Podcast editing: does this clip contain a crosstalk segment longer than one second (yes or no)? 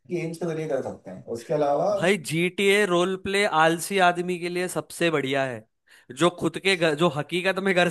no